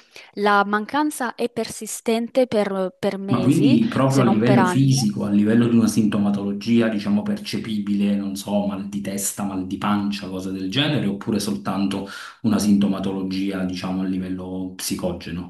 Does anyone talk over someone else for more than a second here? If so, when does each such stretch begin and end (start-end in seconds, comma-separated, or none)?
3.3-5.0